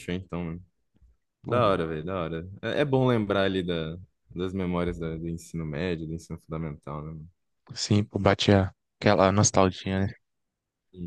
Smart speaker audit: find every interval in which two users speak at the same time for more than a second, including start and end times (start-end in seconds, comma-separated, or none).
none